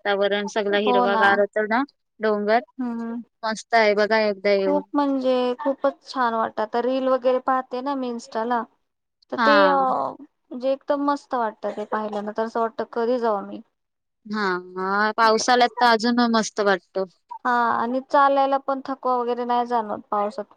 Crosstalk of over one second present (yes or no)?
no